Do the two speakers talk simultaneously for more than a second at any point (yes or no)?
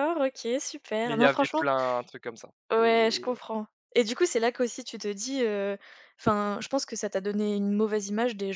no